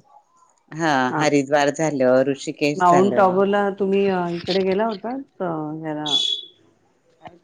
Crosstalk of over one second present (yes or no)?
no